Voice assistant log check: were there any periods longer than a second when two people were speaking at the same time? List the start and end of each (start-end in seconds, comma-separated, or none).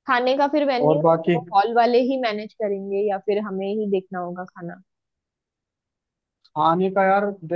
none